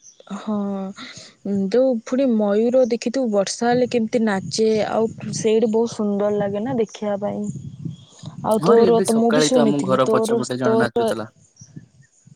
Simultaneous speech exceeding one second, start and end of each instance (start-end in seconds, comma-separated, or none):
8.6-11.1